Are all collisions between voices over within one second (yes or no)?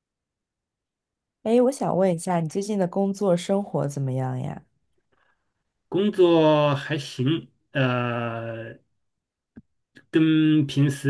yes